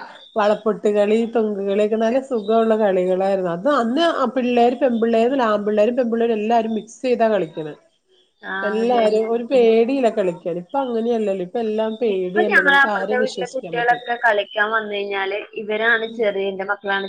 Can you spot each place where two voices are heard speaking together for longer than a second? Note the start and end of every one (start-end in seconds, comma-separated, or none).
12.1-14.1